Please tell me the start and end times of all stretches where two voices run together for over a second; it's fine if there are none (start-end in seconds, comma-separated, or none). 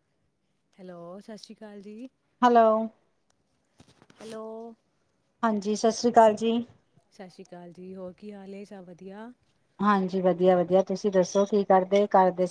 none